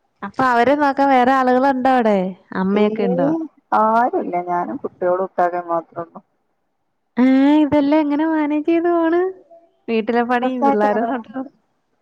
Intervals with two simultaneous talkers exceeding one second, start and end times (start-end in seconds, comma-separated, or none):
none